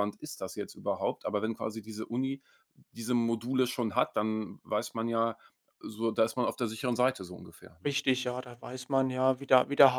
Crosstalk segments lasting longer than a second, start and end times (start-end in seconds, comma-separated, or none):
none